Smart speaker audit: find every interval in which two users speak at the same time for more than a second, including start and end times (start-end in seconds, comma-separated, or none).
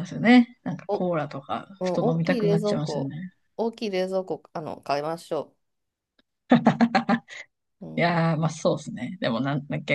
1.8-3.1